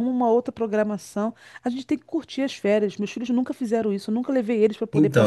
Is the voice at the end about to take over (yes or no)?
yes